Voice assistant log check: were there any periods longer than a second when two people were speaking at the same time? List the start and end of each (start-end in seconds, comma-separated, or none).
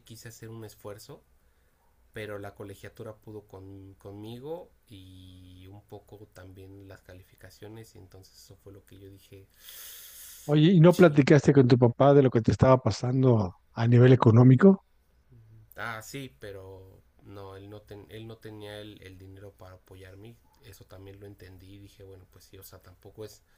none